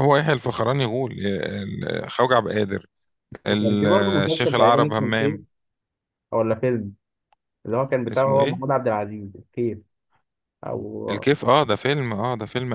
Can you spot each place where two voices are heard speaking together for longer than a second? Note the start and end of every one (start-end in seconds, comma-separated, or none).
3.5-5.4